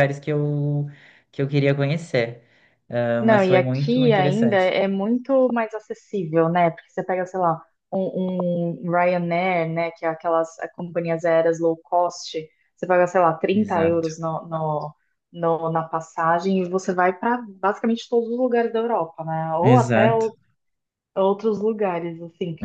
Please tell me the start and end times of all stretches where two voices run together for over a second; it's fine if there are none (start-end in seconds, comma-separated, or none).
3.2-4.7